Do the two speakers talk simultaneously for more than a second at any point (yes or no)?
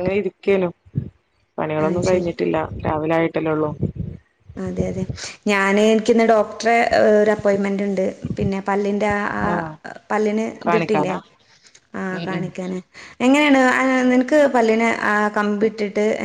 no